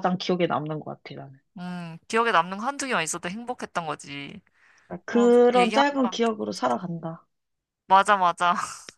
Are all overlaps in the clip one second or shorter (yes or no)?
no